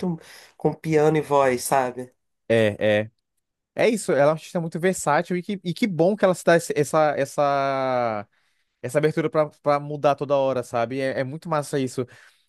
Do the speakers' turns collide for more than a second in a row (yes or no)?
no